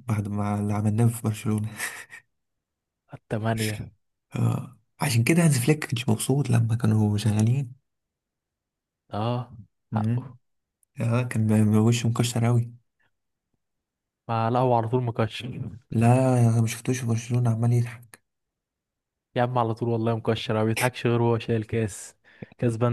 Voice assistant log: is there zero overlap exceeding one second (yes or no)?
yes